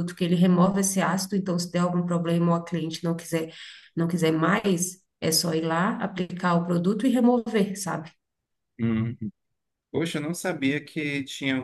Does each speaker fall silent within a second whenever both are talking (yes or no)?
yes